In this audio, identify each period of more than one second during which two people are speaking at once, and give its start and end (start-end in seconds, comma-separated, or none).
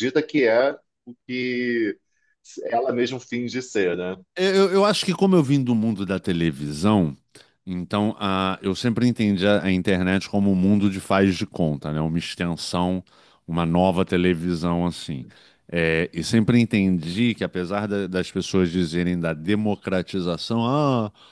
none